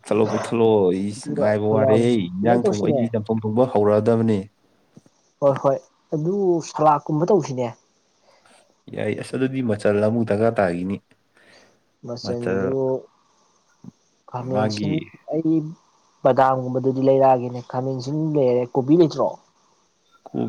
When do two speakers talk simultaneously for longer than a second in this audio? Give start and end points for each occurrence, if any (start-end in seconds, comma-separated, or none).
1.1-3.1